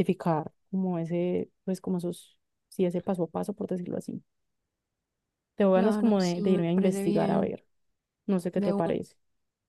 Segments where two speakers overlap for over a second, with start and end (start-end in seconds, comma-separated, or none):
5.7-7.5